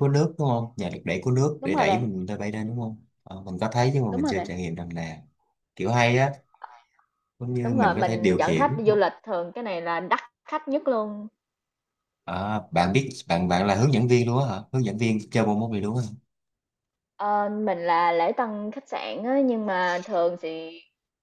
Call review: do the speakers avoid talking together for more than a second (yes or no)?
no